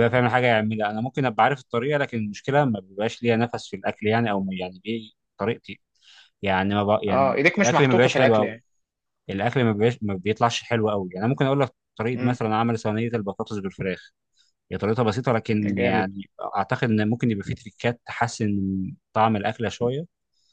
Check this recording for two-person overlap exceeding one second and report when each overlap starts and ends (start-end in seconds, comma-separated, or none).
7.1-8.6